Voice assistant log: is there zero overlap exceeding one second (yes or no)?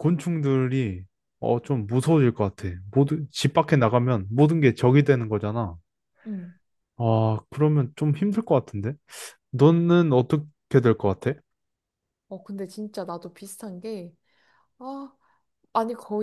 yes